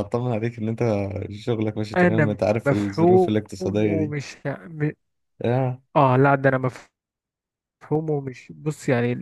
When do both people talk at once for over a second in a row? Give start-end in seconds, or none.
2.0-4.1